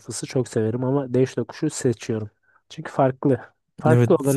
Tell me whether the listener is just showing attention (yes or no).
no